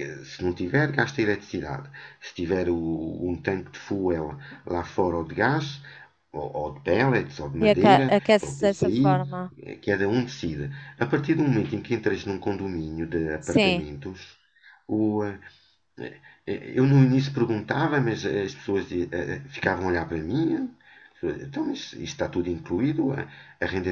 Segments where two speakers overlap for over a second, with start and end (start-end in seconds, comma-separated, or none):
7.6-9.2